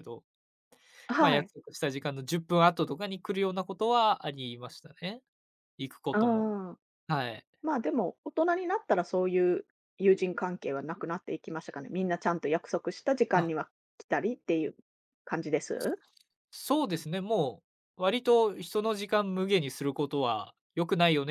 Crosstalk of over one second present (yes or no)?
no